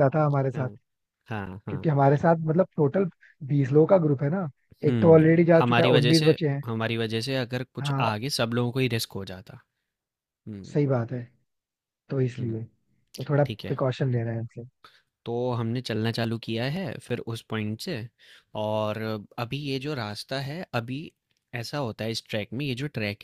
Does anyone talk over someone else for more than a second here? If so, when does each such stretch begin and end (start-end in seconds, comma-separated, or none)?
4.9-6.6